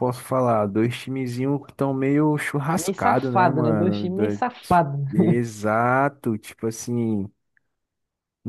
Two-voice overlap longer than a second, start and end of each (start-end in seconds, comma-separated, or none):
2.7-4.4